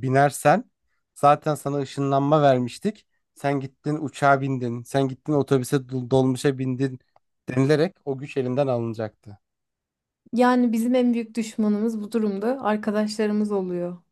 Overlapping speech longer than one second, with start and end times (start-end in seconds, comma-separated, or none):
none